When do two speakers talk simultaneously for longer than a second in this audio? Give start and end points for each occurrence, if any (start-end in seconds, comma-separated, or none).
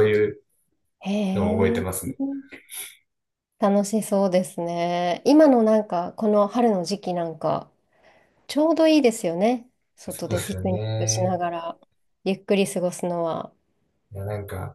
10.1-11.4